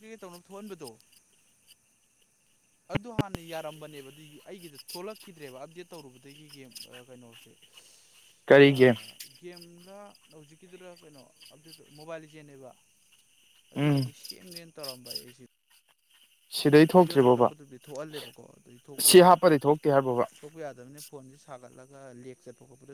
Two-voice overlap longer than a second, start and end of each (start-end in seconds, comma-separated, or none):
none